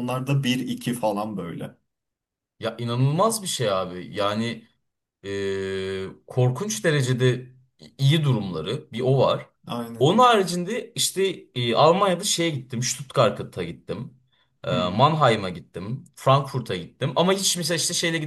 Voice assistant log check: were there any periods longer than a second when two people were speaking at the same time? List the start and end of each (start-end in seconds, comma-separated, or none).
none